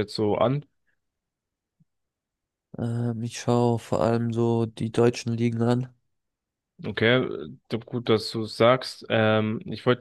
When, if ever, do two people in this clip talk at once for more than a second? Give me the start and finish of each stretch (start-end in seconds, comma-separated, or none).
none